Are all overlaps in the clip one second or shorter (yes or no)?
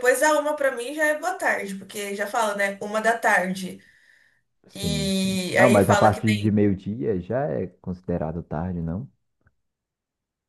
no